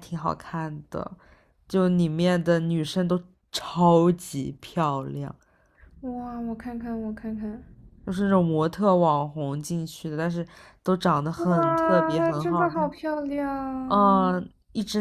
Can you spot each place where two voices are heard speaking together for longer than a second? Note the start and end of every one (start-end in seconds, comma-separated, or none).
11.4-12.9